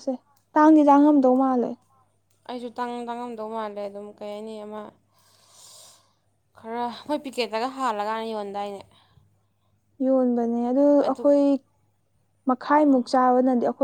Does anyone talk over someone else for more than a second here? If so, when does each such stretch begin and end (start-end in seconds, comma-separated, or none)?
none